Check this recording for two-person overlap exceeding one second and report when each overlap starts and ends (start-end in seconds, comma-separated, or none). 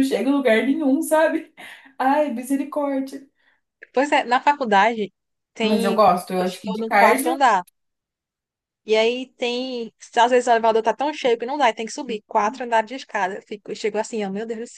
5.6-7.4